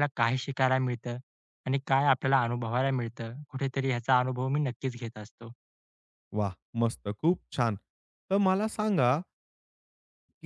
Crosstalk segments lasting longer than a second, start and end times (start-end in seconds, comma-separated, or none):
none